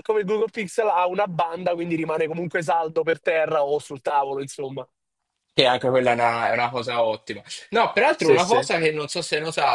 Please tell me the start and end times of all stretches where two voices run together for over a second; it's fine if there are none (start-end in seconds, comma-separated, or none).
none